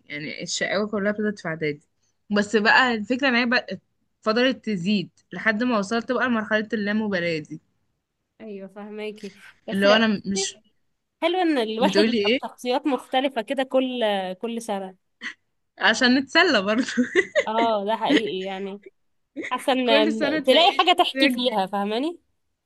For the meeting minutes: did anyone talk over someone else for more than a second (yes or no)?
yes